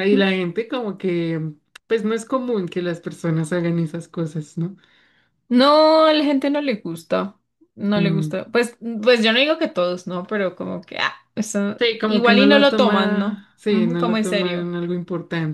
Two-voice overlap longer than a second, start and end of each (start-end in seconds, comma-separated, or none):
11.8-14.7